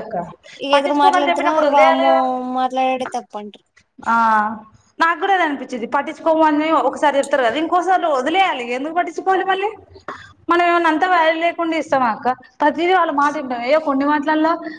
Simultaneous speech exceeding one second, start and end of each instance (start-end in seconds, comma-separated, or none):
0.7-2.1